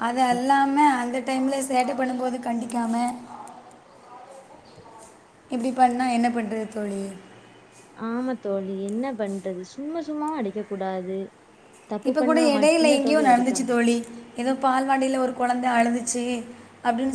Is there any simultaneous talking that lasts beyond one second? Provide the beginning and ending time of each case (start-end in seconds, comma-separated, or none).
12.1-13.8